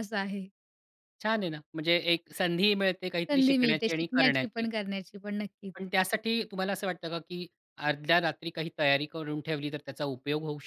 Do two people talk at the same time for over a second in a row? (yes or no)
yes